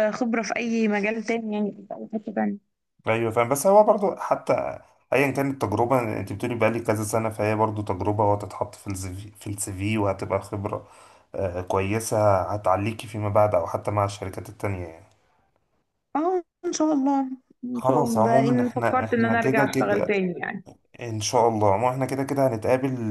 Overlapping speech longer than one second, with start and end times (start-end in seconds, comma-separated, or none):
17.7-20.1